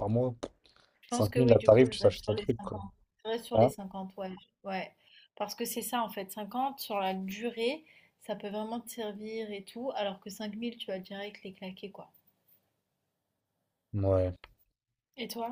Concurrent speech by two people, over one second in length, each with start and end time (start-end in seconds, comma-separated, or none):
1.1-2.8